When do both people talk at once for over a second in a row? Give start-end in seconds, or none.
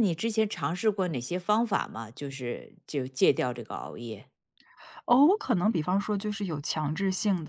none